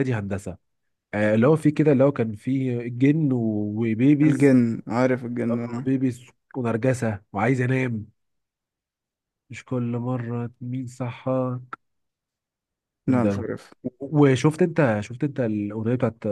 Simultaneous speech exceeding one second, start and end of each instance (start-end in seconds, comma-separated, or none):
none